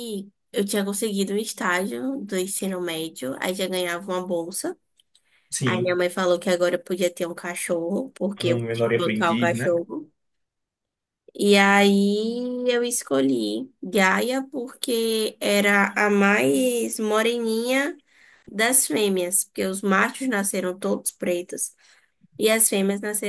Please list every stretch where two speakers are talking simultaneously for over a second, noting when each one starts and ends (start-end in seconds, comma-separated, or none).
8.4-9.7